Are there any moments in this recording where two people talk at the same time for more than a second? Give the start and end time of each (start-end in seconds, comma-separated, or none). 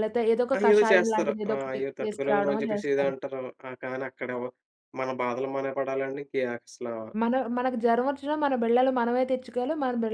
0.6-3.1